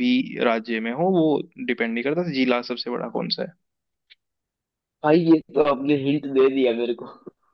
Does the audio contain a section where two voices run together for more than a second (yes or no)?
no